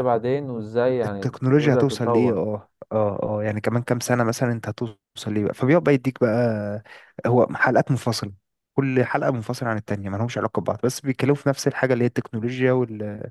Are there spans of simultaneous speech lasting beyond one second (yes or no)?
yes